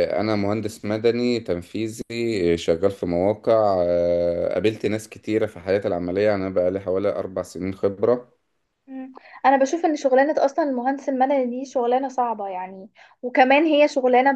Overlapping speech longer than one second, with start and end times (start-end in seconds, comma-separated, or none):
none